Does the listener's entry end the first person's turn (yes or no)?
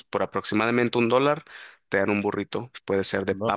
no